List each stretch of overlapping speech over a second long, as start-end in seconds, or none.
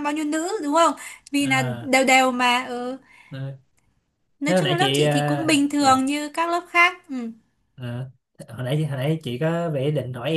4.4-6.0